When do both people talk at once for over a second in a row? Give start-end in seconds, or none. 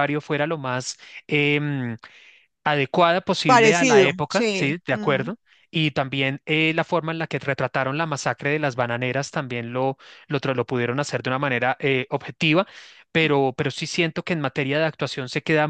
3.5-5.3